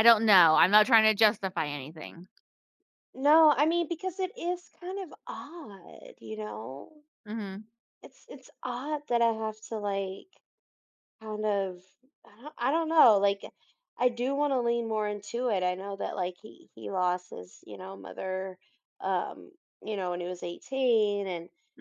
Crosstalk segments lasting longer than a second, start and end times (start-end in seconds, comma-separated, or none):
none